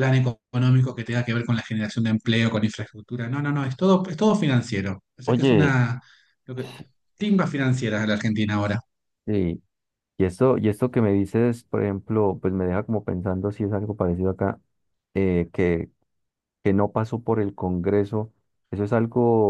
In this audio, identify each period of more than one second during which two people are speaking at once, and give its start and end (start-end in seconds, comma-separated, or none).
none